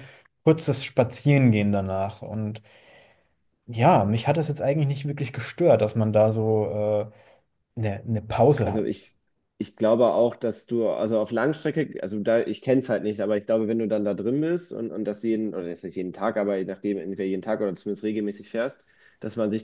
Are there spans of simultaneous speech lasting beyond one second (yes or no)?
no